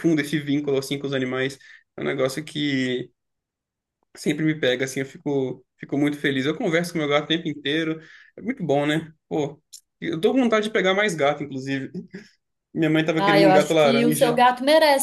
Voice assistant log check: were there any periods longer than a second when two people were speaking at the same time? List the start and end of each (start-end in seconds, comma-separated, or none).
13.2-14.4